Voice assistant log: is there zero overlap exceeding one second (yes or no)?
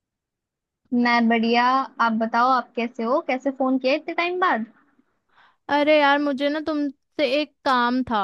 yes